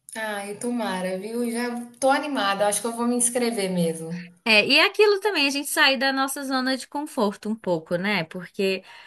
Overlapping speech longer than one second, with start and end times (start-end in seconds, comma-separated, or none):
none